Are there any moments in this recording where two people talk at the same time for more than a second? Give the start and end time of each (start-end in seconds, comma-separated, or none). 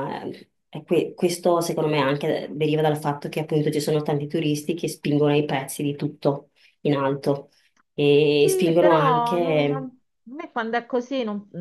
8.4-9.9